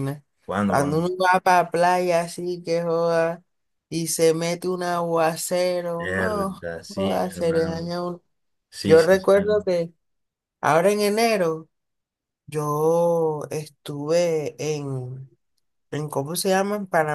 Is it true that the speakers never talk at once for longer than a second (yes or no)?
no